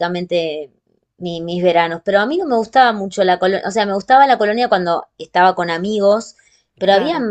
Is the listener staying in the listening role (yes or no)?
yes